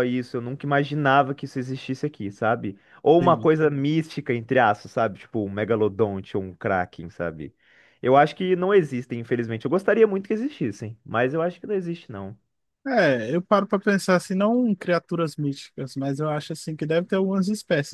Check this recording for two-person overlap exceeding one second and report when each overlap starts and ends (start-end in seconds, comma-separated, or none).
none